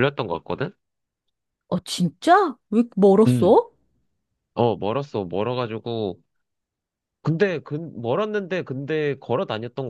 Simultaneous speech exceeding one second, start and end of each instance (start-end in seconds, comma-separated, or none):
none